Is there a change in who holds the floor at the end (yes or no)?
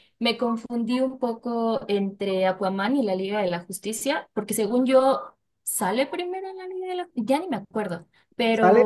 yes